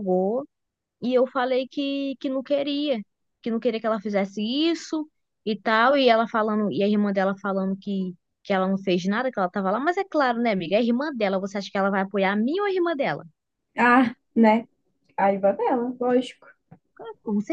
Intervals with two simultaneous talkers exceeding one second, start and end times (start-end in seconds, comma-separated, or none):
none